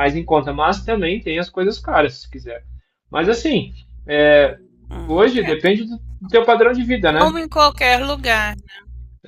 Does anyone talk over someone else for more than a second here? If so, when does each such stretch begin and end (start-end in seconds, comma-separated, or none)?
none